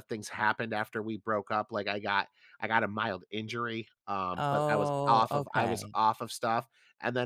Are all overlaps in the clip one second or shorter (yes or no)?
no